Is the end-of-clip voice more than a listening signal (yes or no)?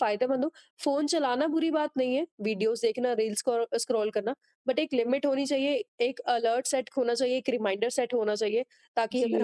yes